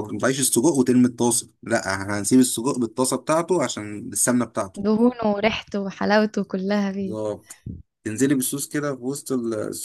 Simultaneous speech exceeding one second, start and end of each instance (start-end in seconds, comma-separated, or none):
none